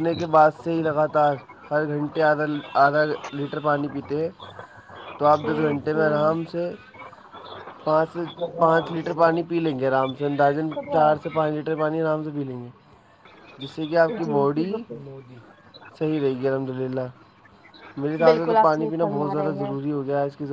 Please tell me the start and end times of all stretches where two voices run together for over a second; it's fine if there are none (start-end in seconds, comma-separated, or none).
18.2-19.7